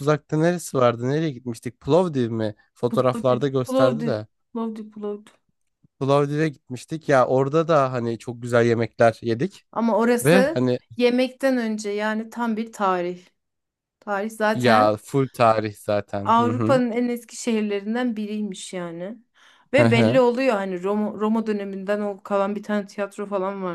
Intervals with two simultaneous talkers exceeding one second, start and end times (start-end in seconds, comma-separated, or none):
2.9-4.1